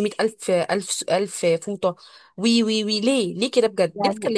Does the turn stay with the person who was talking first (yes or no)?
no